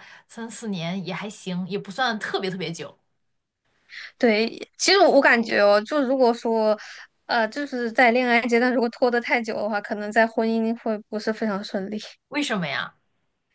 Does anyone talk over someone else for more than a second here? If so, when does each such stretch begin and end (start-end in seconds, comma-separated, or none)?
none